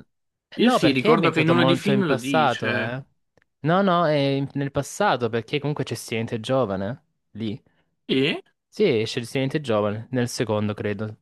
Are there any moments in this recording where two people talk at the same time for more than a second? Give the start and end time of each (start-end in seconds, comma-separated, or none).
0.6-3.0